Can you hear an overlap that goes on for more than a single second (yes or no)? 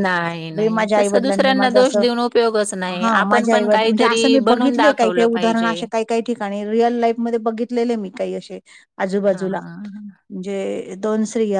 yes